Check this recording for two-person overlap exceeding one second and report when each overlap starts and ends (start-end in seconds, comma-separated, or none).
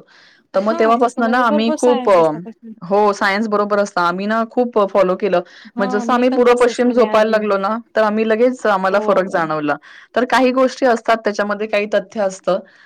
0.7-2.1, 5.8-7.4